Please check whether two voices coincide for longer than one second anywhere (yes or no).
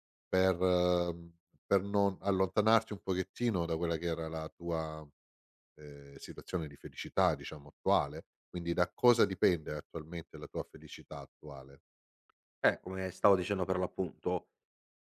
no